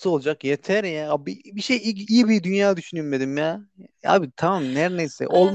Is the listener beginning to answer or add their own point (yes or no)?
yes